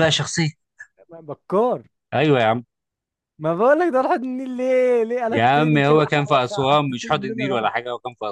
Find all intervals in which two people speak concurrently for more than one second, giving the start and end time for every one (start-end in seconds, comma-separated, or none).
5.3-7.7